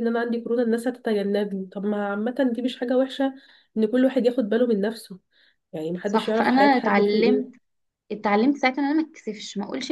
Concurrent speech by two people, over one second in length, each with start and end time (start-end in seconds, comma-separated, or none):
6.0-7.5